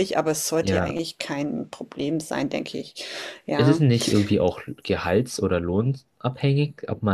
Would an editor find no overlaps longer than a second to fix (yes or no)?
yes